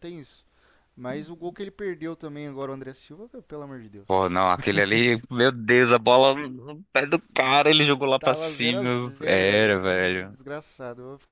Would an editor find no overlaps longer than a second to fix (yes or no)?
no